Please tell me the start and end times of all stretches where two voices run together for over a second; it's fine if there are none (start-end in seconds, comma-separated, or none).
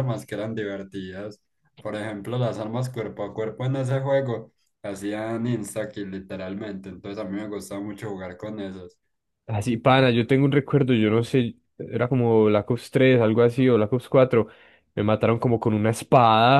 none